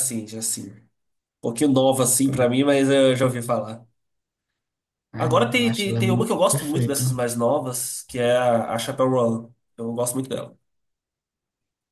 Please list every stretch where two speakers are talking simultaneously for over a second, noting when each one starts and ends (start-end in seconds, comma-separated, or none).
5.2-7.0